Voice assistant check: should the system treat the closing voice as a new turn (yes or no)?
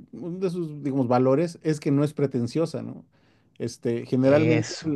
no